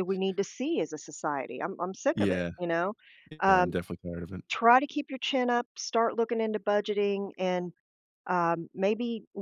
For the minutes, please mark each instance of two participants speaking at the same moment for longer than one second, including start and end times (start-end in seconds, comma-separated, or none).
none